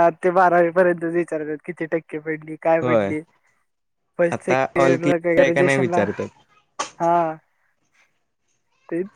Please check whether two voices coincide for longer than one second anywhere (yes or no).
yes